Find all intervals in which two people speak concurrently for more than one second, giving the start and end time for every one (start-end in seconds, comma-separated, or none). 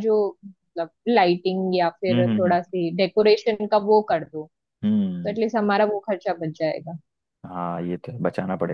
none